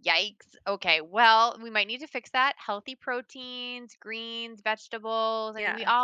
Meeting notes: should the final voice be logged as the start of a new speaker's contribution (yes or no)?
no